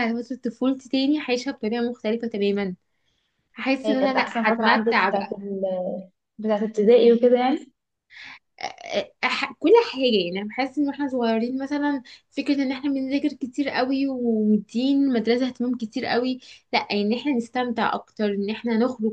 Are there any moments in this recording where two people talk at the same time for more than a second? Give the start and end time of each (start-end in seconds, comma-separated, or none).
3.9-5.3